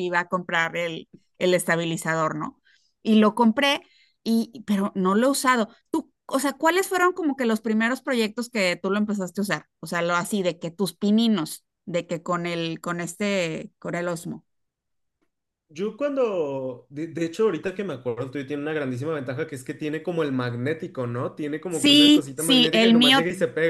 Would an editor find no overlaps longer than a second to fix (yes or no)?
no